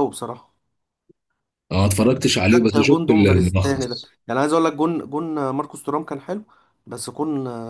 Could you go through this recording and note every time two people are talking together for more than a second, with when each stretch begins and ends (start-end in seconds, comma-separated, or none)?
2.5-4.1